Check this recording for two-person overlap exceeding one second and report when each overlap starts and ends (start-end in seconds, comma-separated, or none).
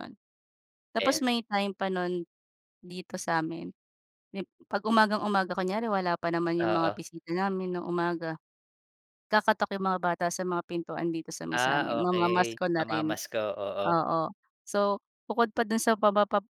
11.5-13.1